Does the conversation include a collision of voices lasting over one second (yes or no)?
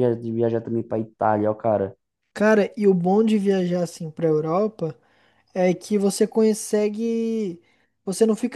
no